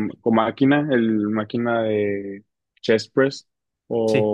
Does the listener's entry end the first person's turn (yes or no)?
no